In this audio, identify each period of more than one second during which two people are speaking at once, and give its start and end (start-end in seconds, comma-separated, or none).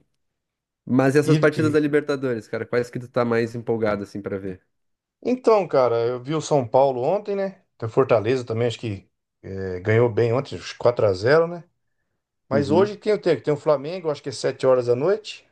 none